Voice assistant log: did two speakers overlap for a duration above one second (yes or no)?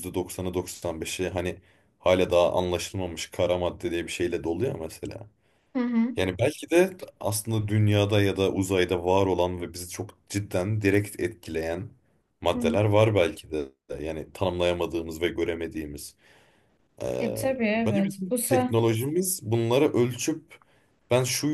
yes